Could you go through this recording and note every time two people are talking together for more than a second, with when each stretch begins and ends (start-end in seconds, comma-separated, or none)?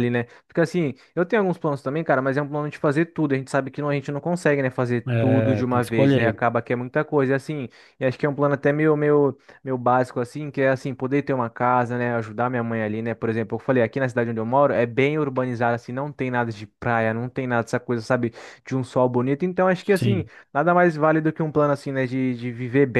5.1-6.4